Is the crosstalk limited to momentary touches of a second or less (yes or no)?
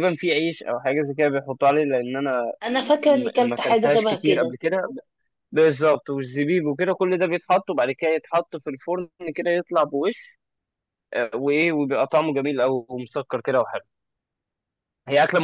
no